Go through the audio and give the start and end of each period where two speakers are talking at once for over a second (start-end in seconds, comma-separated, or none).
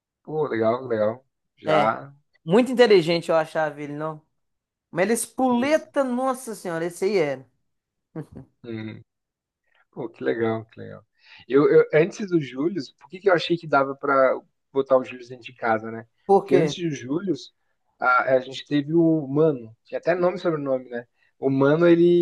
none